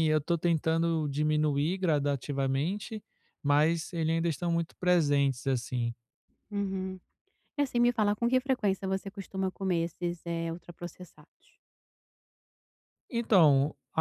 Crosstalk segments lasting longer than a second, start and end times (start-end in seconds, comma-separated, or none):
none